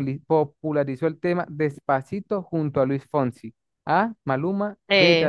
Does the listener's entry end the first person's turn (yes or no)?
no